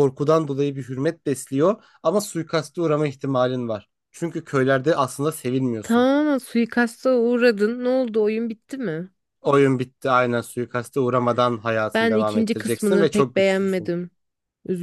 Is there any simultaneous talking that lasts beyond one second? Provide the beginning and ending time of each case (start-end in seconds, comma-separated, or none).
11.9-13.9